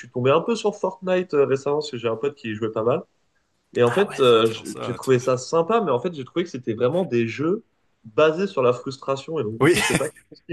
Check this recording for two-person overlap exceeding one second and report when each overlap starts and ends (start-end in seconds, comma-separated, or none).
3.8-5.3